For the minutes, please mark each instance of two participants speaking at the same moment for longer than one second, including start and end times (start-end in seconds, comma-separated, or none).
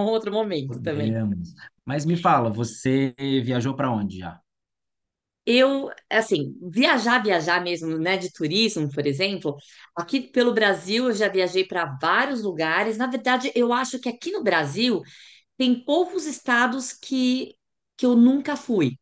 none